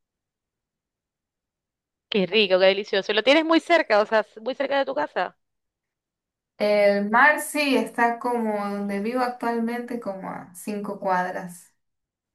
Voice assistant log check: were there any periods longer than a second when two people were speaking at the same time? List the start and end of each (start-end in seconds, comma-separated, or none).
none